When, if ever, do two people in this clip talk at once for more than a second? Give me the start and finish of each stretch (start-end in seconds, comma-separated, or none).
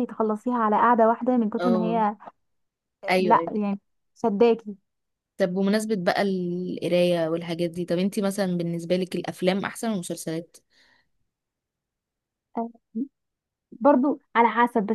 none